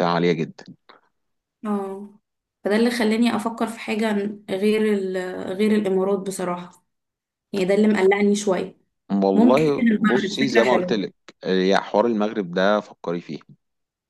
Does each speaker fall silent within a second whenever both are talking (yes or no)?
no